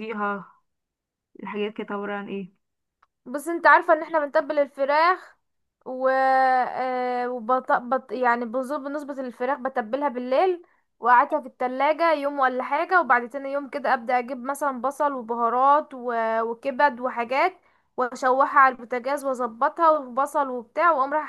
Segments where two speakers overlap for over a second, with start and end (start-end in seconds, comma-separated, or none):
none